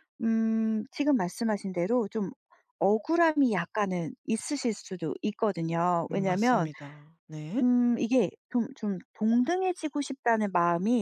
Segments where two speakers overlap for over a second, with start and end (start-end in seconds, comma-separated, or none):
none